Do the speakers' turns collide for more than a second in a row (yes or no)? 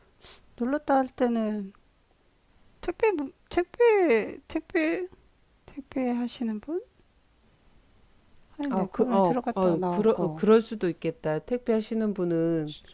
yes